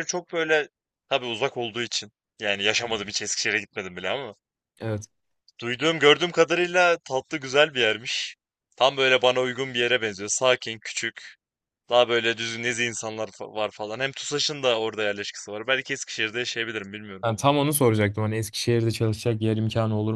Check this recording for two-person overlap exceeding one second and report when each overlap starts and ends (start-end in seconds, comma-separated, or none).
none